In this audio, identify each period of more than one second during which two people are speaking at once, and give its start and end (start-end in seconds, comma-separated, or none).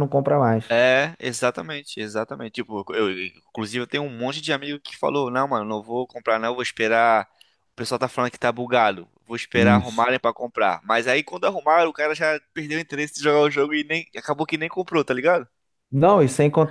none